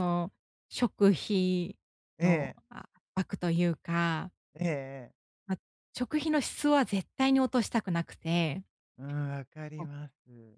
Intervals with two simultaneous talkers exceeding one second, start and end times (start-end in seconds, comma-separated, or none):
none